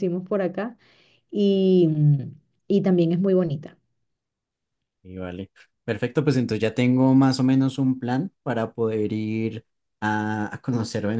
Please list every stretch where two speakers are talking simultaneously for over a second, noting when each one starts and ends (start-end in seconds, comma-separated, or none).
none